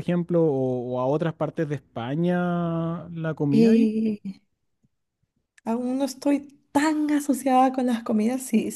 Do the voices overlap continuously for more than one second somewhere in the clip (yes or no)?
no